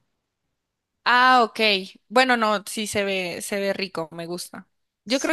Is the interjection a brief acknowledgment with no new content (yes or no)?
yes